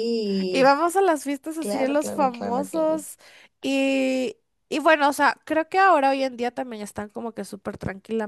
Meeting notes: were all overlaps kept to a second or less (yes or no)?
no